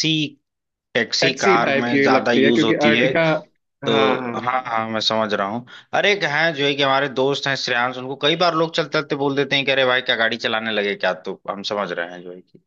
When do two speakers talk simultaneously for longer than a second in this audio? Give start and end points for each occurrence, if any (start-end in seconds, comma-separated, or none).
1.2-3.1